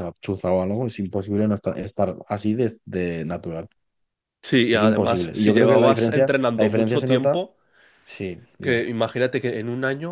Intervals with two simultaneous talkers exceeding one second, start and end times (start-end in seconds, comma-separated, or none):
4.7-7.4